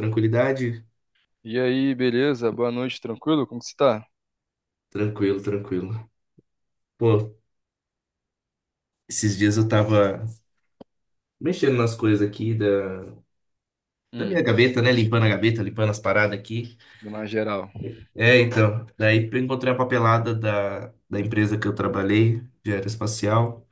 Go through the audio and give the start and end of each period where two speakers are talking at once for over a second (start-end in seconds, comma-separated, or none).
none